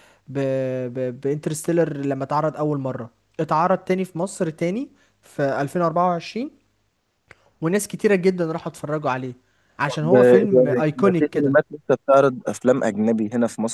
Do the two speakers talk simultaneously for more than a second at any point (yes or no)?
yes